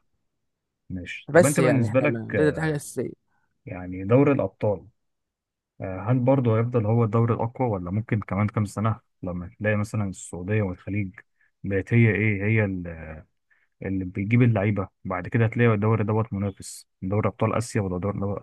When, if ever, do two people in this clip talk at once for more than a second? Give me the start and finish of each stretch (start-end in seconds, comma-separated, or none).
1.3-2.7